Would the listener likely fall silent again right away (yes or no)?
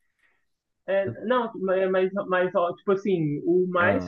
yes